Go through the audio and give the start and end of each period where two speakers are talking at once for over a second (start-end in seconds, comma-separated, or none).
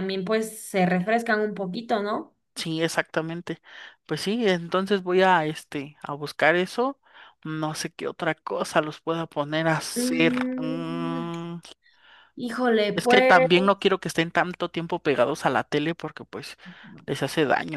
9.9-11.3